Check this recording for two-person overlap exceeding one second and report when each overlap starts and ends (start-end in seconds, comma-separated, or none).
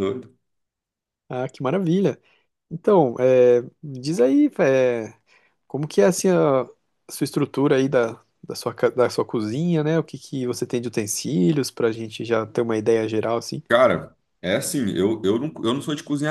none